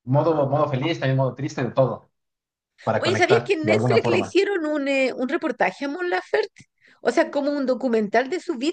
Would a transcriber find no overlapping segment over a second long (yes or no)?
no